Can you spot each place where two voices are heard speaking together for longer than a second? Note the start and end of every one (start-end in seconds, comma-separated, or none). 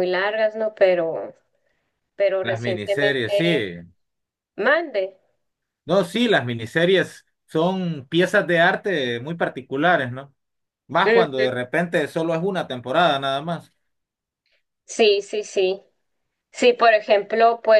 2.4-3.6